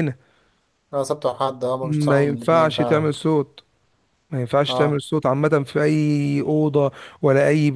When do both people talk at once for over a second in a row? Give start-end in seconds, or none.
1.8-3.1